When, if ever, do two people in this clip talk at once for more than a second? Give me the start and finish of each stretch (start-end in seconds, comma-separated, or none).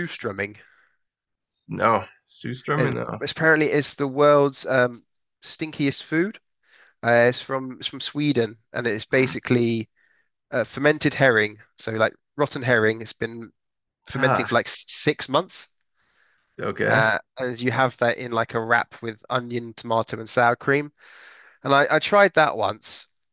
none